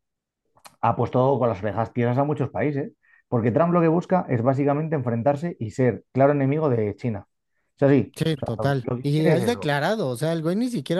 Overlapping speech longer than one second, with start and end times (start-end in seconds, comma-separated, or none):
8.2-9.7